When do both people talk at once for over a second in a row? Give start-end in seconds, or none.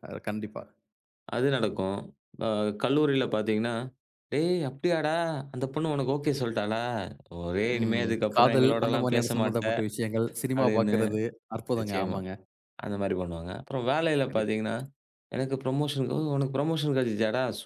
7.8-9.6